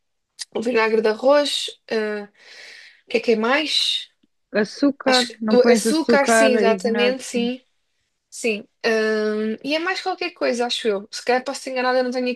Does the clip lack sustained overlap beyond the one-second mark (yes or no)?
no